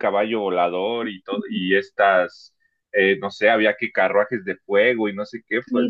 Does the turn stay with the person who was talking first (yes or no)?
no